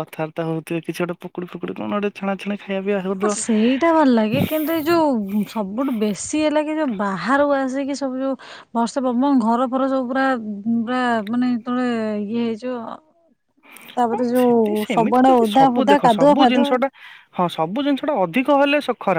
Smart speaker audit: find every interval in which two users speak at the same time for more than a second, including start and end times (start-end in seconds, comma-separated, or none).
14.1-16.7